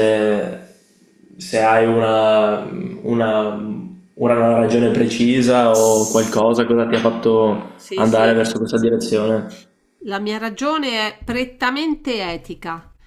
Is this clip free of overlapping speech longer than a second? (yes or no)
yes